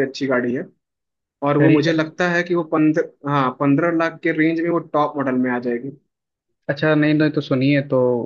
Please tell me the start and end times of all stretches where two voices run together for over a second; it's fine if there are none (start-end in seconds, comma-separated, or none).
none